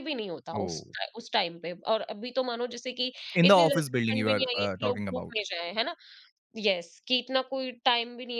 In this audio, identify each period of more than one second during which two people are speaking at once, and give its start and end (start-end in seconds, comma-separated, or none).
3.4-5.4